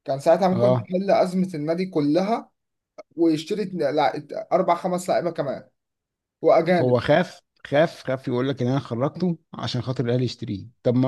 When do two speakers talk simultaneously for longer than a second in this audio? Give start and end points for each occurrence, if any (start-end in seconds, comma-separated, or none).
none